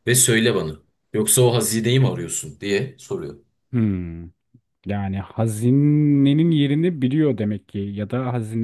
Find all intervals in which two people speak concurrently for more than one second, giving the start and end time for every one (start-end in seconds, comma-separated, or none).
none